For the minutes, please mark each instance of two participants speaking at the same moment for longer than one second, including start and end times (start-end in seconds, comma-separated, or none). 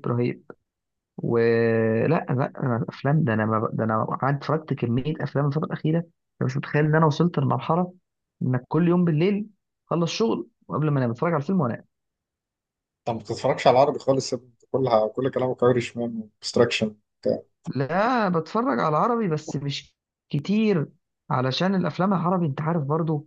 none